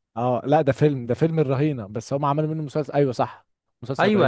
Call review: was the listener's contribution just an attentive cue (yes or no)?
no